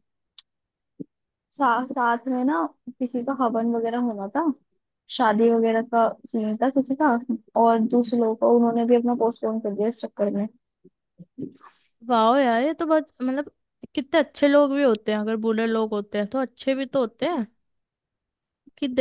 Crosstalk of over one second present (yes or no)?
no